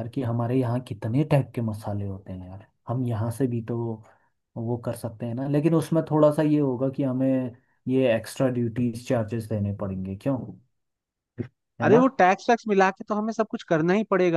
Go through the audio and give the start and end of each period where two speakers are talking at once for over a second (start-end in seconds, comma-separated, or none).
none